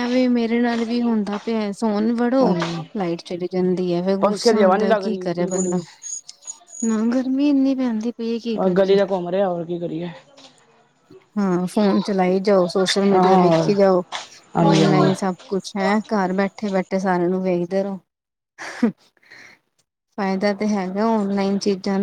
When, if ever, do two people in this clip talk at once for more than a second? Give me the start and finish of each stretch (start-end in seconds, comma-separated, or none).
4.2-5.8